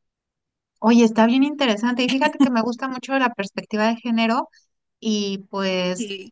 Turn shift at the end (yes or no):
no